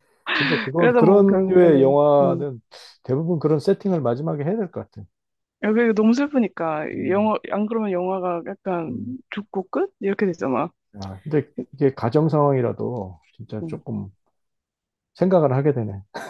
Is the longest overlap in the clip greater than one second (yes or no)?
yes